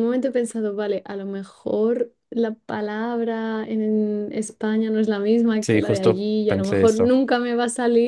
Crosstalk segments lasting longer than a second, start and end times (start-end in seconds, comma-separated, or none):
5.6-7.1